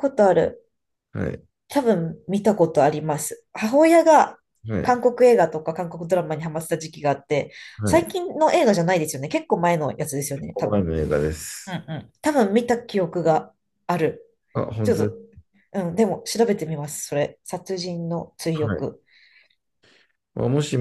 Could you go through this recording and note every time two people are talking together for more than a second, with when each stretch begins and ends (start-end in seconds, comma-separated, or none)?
none